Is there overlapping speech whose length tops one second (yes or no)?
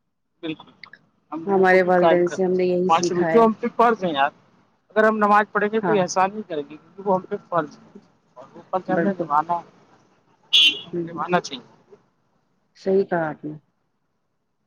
yes